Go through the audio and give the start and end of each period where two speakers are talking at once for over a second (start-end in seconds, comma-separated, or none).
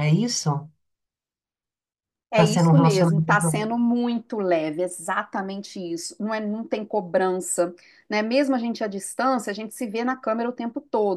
2.3-3.6